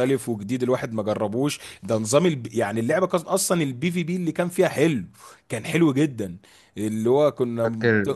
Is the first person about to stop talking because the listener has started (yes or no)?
no